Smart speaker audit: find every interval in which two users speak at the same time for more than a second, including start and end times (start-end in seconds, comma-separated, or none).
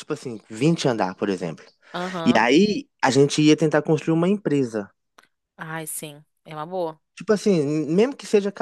none